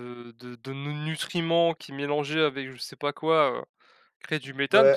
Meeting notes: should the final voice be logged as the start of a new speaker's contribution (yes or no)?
yes